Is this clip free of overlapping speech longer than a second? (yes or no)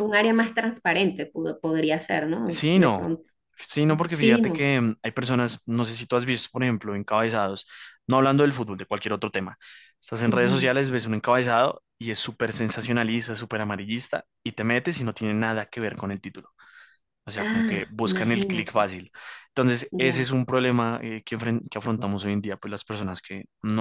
no